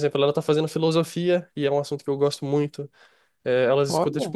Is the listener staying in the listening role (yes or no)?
yes